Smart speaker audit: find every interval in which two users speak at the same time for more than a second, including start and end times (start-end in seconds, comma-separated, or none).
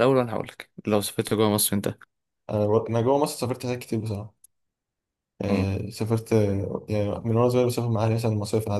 none